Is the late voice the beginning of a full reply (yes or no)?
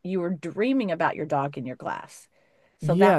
yes